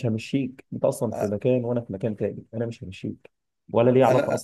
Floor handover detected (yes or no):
no